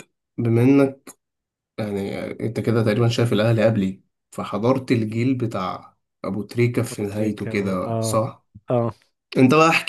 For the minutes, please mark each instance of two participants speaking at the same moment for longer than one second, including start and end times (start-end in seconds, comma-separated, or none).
6.9-8.2